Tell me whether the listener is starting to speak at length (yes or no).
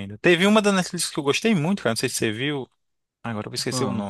no